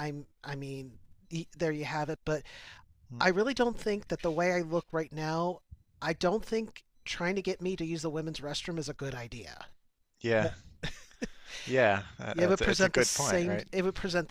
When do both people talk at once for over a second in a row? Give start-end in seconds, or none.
12.3-13.7